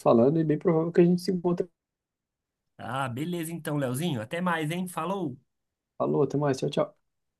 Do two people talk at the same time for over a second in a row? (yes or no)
no